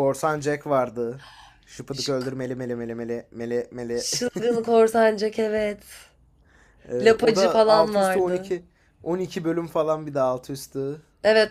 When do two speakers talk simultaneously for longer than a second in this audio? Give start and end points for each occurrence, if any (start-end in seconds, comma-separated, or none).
7.0-8.5